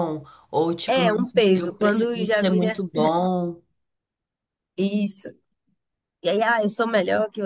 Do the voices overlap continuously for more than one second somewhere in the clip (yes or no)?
yes